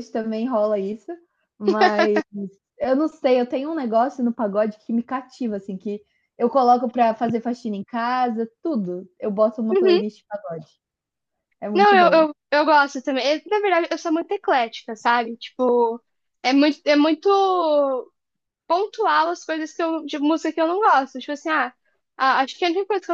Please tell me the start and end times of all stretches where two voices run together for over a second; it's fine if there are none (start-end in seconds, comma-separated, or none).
none